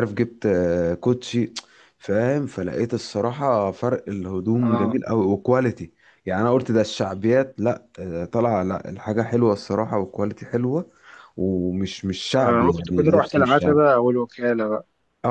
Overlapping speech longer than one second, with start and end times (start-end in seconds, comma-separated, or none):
12.3-13.8